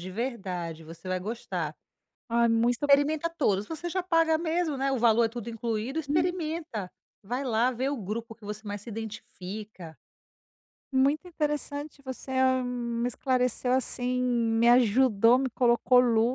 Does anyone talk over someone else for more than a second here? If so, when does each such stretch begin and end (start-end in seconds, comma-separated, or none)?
none